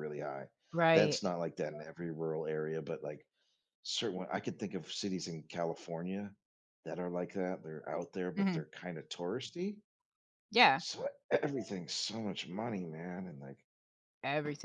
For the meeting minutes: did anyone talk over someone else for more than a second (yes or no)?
no